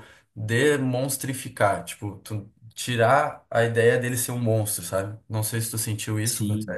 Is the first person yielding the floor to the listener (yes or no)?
yes